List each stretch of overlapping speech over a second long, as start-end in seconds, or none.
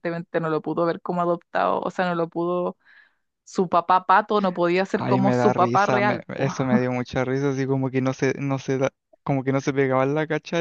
5.0-6.5